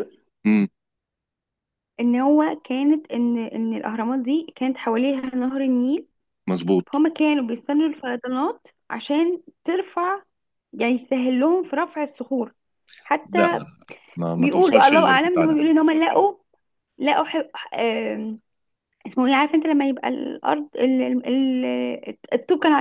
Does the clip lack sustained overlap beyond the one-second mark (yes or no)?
no